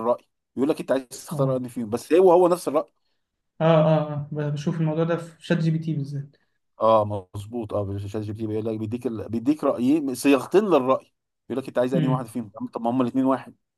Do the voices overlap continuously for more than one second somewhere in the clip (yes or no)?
no